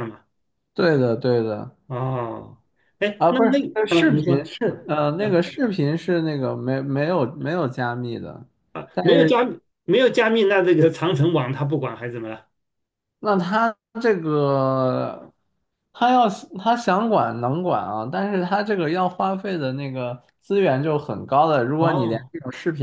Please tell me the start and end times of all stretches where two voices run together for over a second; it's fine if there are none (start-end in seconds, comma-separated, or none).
3.2-5.5